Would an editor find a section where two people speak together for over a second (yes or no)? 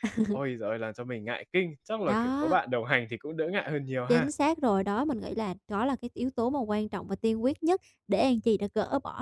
no